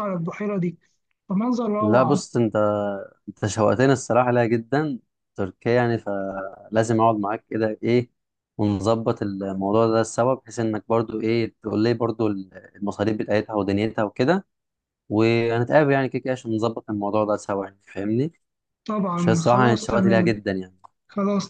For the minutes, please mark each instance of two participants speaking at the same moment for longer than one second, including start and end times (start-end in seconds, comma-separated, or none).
19.2-20.4